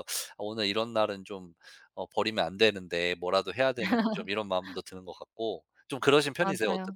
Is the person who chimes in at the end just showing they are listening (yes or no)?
no